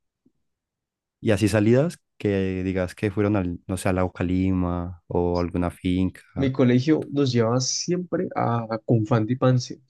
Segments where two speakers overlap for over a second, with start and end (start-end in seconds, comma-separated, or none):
none